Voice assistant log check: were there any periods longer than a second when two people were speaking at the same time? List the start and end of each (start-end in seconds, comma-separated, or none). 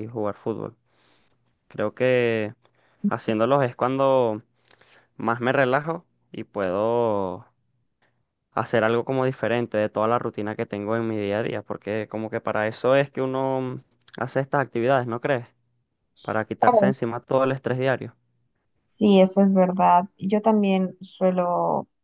none